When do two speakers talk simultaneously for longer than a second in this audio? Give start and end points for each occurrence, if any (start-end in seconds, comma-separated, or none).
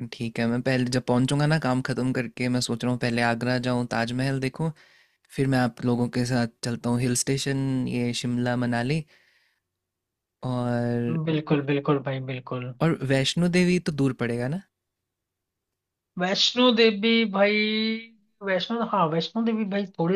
none